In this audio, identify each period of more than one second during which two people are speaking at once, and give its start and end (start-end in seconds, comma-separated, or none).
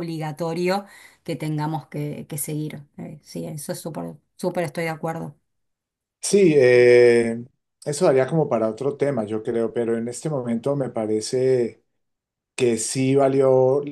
none